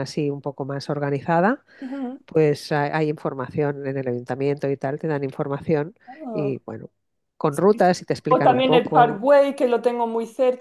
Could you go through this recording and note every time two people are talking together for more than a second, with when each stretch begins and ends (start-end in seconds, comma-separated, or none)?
7.7-9.3